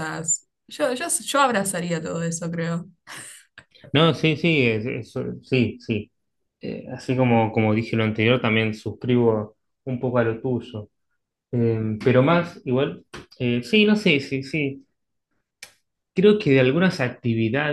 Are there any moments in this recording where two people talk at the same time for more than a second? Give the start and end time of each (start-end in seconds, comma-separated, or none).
none